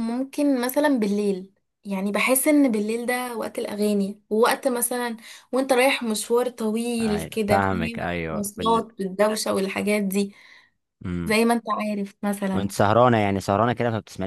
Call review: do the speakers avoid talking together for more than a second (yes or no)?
no